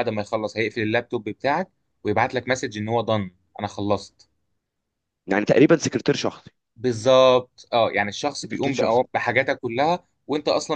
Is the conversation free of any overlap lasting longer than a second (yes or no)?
yes